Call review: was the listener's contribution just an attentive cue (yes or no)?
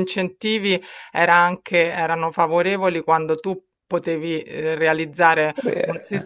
yes